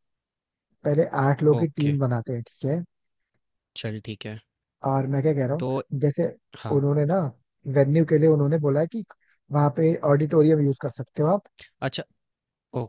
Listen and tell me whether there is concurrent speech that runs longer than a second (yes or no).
no